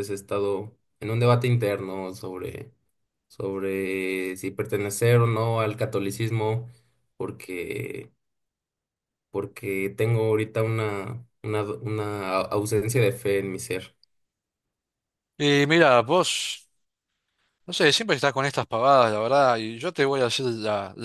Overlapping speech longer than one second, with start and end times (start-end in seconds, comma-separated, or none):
none